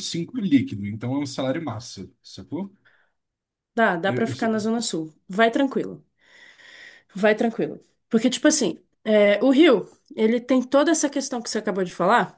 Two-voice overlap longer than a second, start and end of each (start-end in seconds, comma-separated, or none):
none